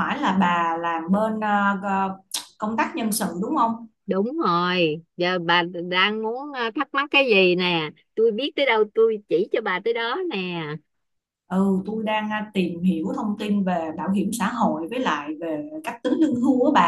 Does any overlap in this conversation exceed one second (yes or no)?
no